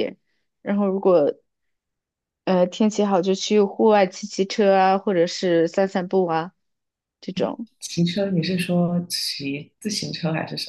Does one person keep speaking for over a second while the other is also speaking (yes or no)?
no